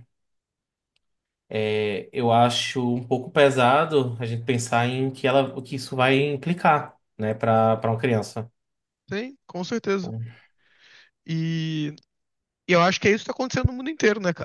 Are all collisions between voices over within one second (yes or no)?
yes